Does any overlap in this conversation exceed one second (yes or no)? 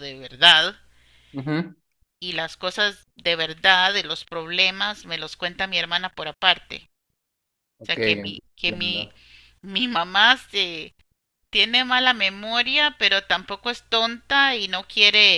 yes